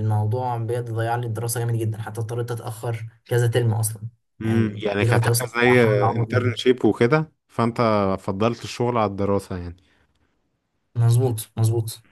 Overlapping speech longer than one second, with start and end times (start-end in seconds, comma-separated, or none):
4.4-6.5